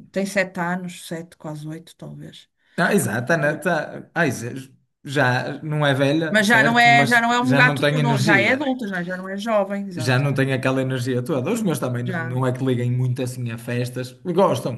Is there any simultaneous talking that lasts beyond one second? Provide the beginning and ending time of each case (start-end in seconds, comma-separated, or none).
6.3-8.7